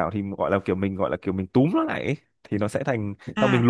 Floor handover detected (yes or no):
yes